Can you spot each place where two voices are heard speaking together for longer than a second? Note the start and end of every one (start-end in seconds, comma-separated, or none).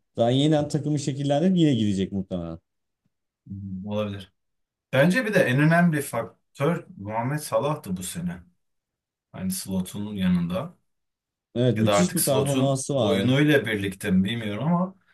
11.8-13.3